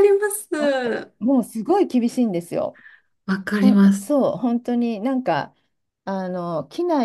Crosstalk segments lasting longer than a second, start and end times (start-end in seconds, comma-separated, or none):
none